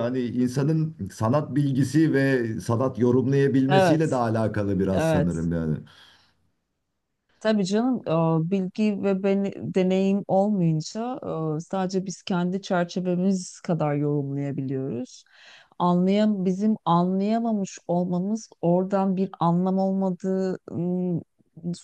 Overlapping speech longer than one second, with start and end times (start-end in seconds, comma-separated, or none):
none